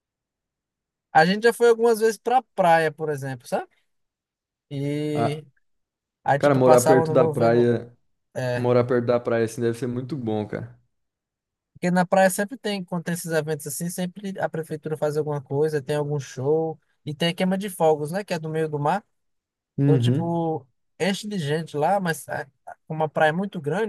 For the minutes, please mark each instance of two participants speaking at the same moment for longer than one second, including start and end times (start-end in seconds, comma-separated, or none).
6.4-7.8